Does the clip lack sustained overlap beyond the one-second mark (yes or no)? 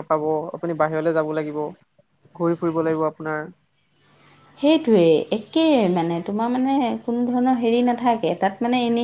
yes